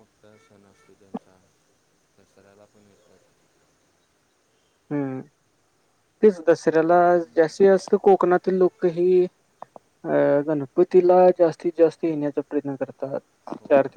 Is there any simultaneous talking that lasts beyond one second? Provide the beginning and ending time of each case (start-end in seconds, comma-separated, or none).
none